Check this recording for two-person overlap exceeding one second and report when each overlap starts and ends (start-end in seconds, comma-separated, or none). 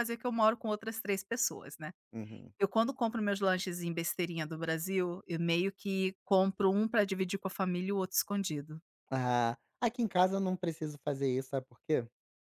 none